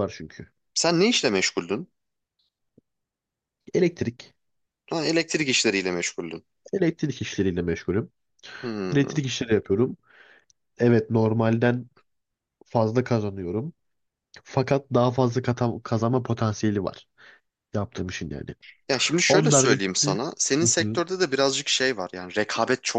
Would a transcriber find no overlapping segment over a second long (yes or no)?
yes